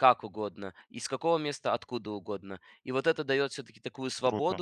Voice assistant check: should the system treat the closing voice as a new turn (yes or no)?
no